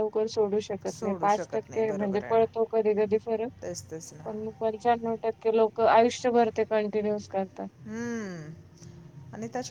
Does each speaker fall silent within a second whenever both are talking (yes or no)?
no